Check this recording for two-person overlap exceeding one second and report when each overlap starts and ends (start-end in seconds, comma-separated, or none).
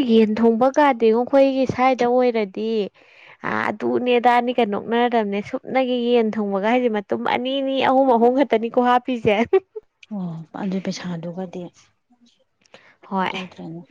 none